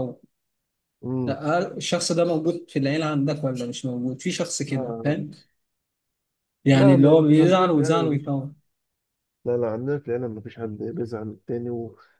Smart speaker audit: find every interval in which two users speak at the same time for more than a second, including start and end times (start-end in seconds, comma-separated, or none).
6.7-8.3